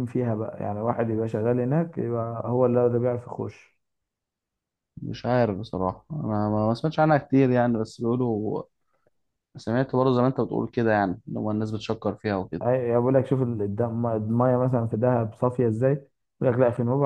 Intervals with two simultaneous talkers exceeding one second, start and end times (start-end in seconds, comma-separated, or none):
none